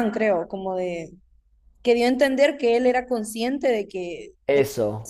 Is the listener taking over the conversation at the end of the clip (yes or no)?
no